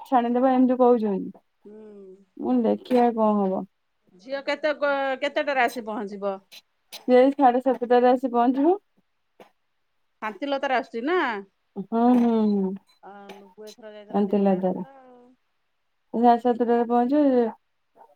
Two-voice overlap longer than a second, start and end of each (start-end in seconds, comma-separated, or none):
13.3-14.8